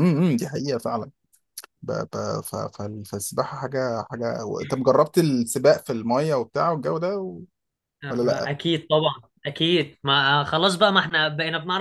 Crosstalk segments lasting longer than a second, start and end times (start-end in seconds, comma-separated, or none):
none